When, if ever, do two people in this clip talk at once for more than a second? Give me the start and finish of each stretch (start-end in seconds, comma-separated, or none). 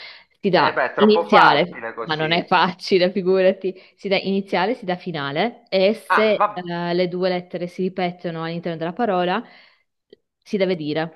0.5-2.5